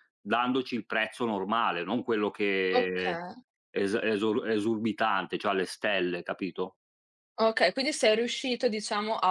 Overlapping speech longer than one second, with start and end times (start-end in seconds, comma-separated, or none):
none